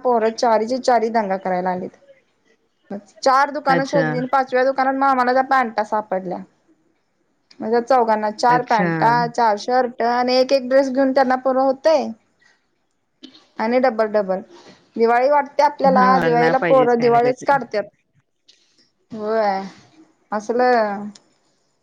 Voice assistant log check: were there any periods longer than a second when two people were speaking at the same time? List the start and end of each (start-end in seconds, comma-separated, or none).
16.0-17.6